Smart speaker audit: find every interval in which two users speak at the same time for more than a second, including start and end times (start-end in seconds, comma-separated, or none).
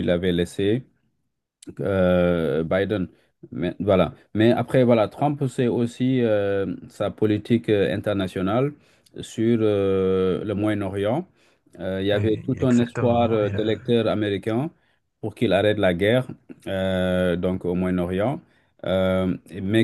12.1-13.7